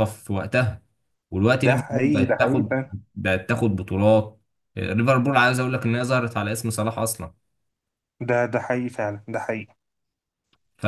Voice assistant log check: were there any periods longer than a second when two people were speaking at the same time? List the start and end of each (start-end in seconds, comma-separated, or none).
1.6-2.8